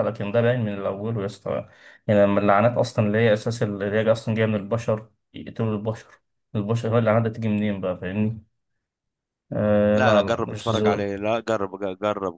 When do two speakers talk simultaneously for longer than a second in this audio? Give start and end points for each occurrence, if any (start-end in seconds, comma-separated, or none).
9.9-11.1